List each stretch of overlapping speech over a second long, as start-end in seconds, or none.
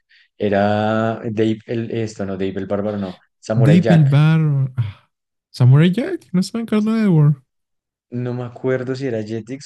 none